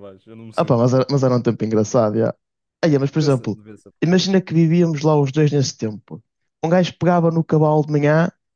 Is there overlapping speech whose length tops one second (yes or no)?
no